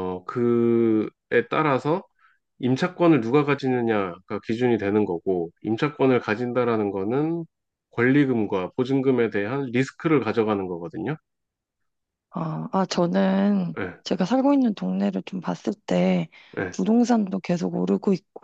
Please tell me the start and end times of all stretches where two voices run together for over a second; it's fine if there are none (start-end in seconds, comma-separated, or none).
none